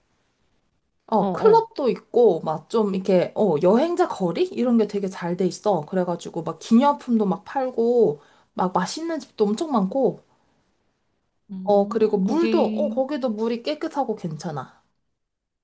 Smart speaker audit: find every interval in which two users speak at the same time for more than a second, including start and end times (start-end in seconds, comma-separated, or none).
11.6-13.0